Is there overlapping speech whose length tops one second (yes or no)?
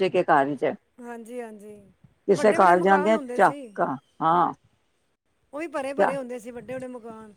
yes